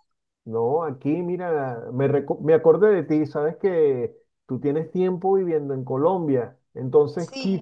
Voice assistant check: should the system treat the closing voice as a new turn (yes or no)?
no